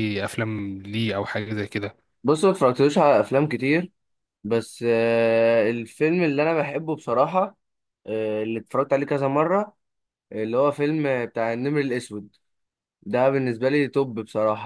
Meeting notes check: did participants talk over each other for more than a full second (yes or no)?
no